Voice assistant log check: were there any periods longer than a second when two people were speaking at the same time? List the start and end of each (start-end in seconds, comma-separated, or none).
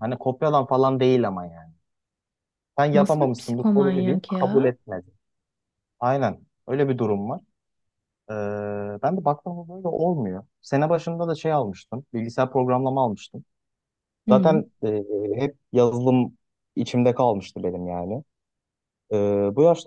2.9-4.8